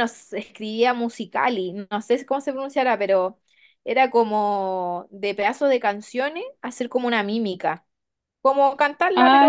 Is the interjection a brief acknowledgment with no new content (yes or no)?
no